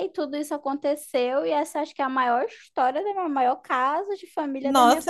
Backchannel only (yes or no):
no